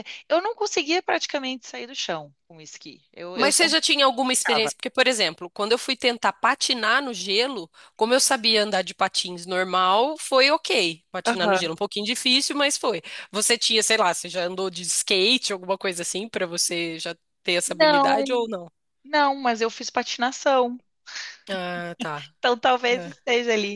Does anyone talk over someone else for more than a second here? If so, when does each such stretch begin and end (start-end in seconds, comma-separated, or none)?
none